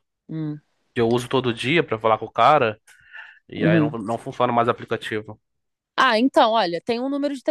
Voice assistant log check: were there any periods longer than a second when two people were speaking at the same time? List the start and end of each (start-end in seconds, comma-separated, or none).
none